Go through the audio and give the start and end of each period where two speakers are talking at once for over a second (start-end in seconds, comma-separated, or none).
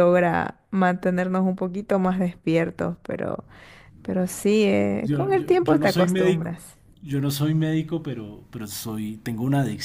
5.0-6.5